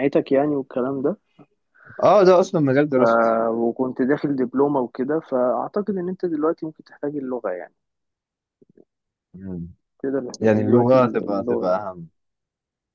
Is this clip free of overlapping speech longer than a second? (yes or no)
no